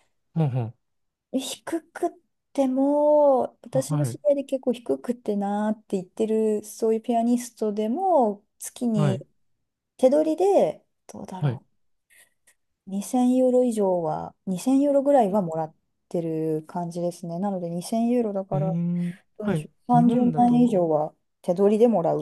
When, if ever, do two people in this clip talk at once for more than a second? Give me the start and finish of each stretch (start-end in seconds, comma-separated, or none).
19.4-20.7